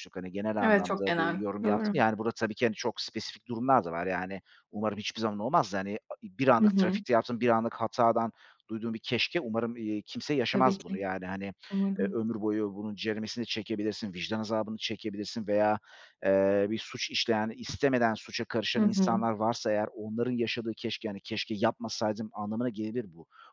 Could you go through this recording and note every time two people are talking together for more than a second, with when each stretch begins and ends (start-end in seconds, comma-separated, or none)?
0.6-1.9